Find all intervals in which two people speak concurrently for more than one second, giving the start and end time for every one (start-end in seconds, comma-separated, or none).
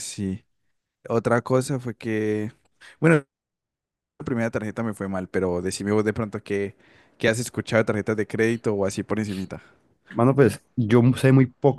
none